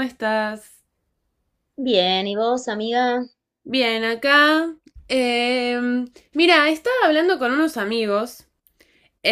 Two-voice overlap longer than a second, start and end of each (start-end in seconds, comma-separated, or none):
none